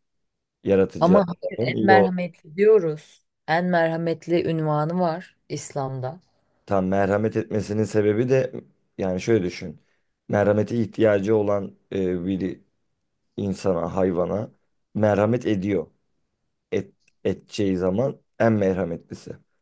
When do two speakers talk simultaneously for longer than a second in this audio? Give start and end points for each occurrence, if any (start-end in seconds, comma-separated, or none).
1.0-2.3